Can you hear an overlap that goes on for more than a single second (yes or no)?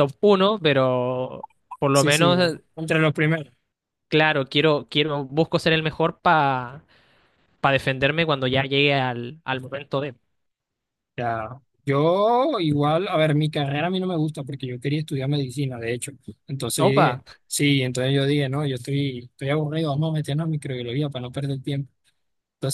no